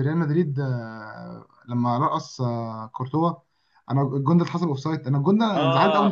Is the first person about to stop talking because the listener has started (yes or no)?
yes